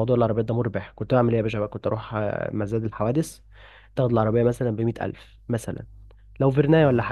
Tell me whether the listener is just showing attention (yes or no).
yes